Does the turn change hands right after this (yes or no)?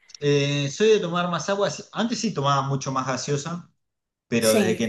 no